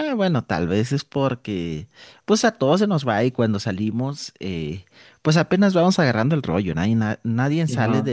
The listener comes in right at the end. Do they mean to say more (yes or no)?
no